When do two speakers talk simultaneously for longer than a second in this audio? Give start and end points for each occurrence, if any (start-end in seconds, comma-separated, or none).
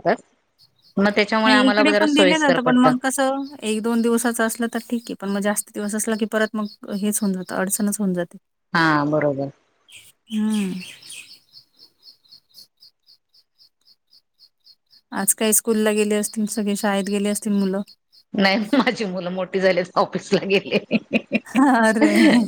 1.4-2.9